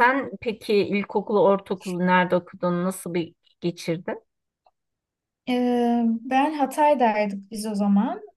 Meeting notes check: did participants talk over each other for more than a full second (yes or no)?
no